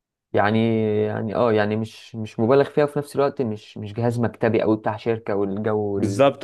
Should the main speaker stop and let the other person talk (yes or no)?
yes